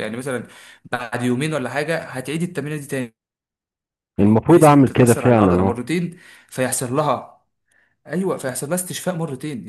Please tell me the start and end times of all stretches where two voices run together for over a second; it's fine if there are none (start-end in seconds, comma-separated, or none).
4.2-5.8